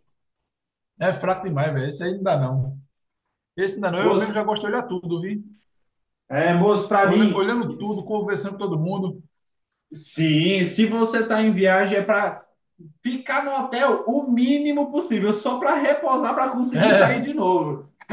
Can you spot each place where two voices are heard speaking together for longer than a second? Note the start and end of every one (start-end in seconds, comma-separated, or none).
none